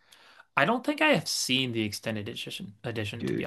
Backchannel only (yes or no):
yes